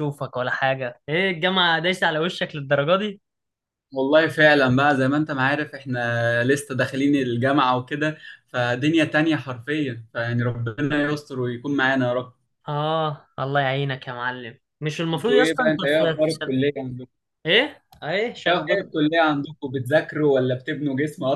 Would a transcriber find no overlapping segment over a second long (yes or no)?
no